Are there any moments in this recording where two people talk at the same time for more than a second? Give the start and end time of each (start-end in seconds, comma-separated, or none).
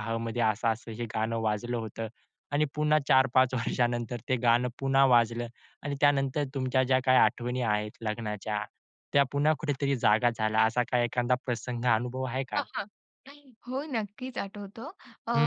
none